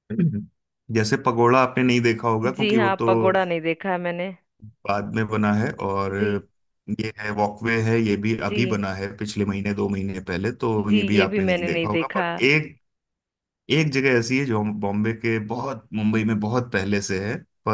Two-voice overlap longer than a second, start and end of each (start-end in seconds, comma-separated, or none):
10.8-12.2